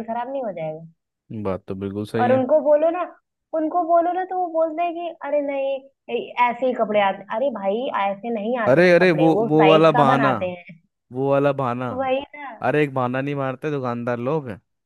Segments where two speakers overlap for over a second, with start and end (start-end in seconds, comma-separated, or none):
8.7-10.3